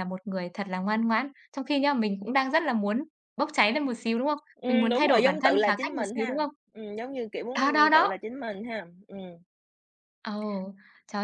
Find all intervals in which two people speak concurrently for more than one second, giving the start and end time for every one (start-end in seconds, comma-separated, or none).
4.5-6.5